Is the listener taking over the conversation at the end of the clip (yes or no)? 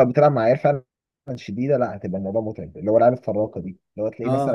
no